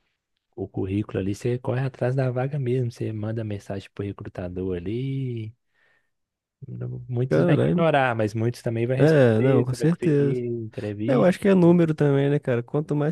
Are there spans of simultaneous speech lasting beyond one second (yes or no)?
yes